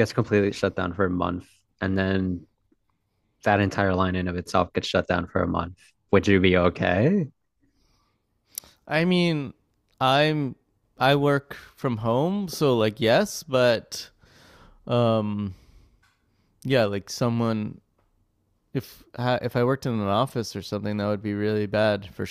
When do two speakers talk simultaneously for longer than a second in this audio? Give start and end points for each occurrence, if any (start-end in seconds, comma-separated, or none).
none